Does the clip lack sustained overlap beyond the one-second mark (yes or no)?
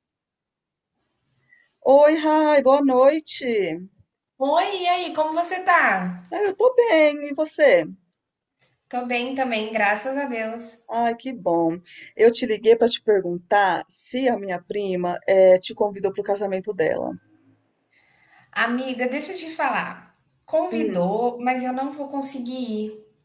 yes